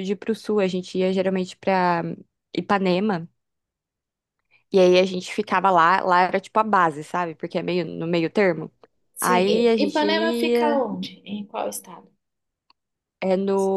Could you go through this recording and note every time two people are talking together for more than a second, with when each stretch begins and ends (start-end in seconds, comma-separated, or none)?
9.2-10.9